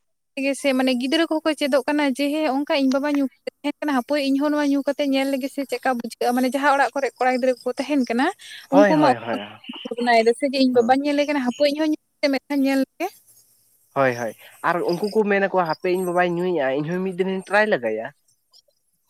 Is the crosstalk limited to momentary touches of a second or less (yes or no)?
yes